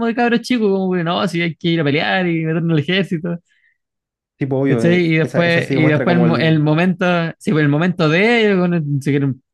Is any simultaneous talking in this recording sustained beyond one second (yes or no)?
yes